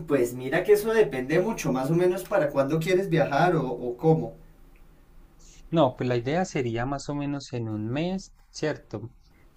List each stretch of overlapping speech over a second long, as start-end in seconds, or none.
none